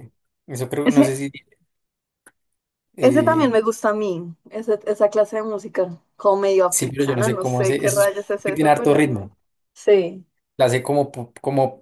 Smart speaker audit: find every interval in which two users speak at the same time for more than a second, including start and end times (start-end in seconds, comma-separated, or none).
6.7-8.9